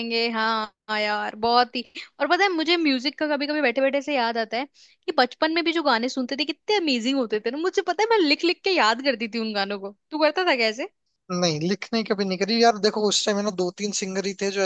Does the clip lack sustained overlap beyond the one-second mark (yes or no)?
yes